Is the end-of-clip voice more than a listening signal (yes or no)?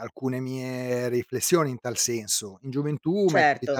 no